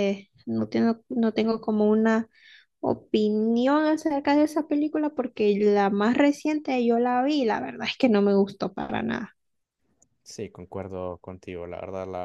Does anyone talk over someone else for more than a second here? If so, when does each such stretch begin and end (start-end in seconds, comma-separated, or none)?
none